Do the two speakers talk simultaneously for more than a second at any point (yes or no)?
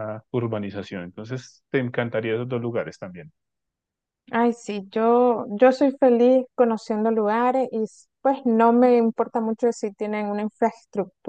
no